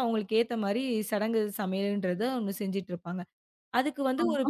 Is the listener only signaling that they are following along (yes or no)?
yes